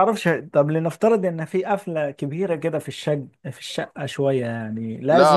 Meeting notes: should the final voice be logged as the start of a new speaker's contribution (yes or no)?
yes